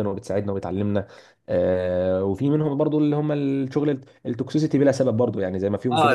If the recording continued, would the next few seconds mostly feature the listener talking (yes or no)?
yes